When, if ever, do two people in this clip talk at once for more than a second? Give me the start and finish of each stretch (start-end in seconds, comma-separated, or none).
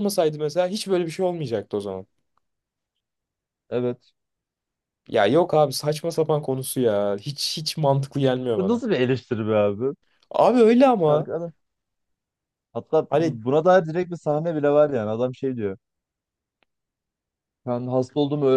none